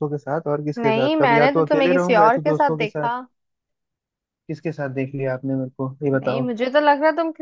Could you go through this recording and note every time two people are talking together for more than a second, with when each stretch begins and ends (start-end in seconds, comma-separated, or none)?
0.8-3.1